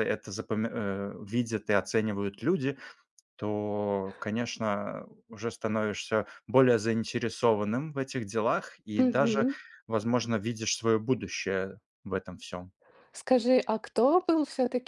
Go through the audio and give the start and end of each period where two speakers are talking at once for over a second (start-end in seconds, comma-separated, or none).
none